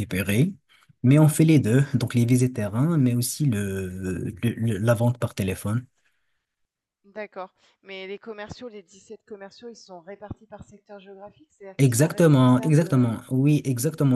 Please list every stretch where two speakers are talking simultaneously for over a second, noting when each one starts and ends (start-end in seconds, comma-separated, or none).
11.8-13.1